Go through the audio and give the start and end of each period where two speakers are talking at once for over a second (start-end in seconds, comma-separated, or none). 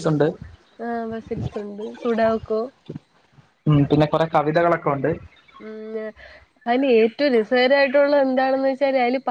none